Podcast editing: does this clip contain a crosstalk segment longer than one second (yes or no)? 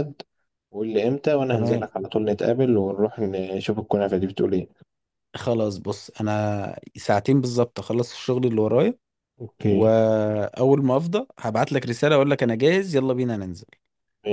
no